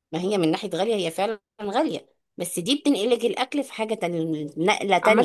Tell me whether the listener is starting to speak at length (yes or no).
yes